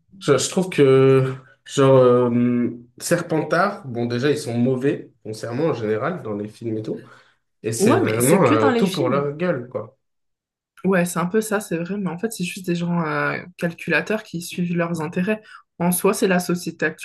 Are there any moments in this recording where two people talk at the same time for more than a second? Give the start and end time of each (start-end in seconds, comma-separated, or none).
7.8-9.4